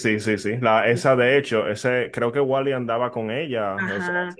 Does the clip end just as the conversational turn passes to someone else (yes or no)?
yes